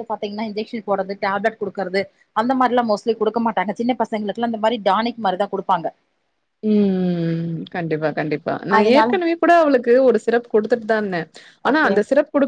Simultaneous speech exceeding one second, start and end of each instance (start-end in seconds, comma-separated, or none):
none